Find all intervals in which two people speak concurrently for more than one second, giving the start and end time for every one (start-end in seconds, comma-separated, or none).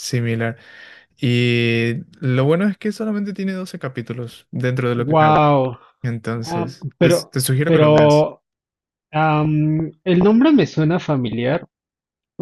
6.4-8.3